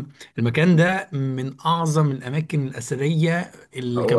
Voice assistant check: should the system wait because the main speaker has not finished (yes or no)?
yes